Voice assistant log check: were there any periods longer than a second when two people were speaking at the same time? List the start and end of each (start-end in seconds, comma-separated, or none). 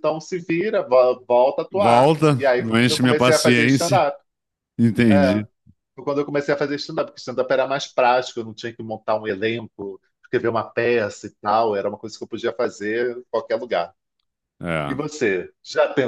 1.7-4.0